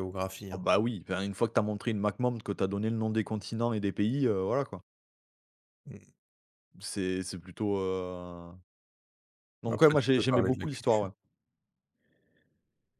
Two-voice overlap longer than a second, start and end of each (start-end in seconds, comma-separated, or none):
9.7-11.1